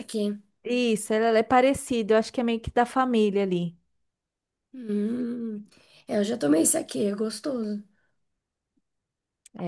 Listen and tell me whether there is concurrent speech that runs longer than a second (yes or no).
no